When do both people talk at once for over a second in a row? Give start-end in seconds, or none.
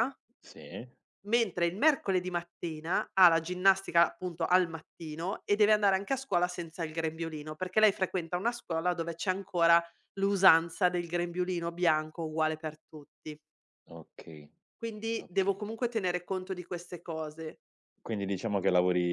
none